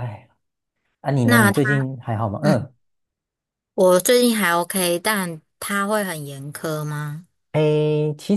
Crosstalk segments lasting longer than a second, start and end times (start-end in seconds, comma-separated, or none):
none